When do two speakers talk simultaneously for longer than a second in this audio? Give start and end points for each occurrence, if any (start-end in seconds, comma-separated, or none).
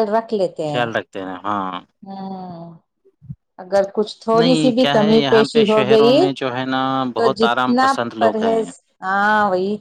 4.4-6.3, 7.2-8.6